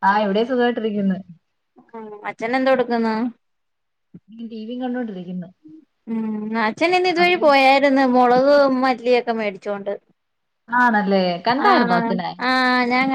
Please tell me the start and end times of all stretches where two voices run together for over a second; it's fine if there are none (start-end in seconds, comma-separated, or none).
none